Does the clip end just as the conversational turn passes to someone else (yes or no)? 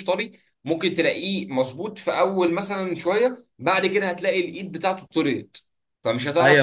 yes